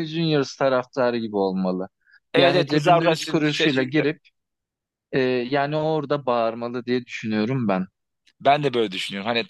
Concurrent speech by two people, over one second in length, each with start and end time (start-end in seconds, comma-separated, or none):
2.4-4.1